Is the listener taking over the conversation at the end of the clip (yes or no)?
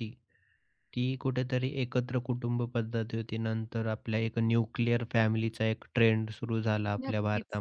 no